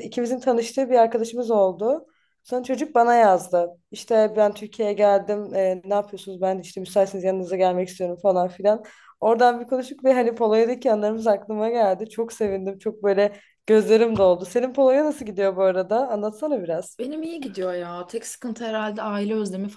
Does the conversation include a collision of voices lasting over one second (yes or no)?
no